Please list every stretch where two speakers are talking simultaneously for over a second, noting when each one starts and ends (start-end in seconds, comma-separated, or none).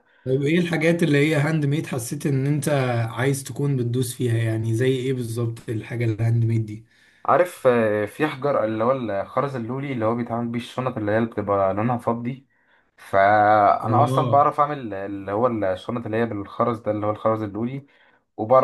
none